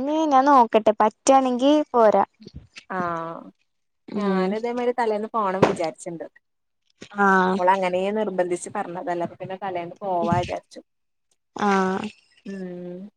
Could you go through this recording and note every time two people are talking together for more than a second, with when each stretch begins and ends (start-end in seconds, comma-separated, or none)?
none